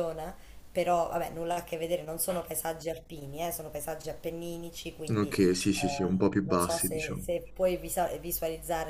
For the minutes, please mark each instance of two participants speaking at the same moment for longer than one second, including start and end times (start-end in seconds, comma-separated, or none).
5.2-7.2